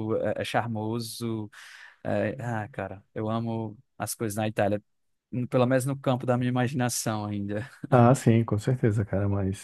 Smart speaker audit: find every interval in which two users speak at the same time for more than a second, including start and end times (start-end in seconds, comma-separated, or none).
none